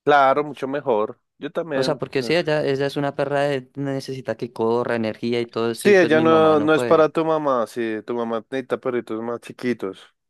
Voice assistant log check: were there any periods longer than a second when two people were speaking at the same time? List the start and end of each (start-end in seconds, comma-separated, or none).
5.8-7.1